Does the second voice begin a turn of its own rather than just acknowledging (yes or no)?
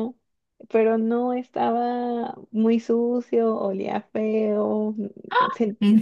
no